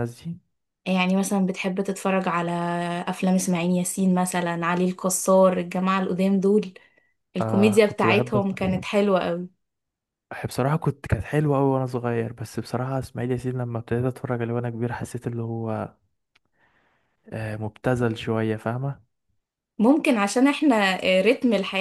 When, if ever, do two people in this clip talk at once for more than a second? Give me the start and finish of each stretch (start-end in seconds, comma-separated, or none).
7.4-8.8